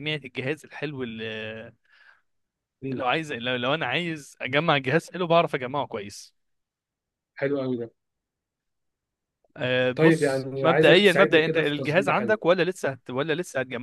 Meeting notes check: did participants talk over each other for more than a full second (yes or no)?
yes